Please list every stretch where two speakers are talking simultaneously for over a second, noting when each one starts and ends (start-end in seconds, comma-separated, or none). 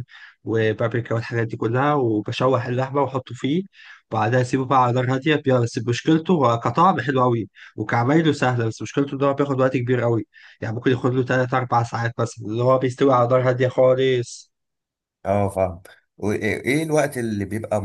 none